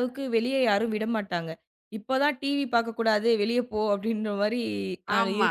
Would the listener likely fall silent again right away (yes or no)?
yes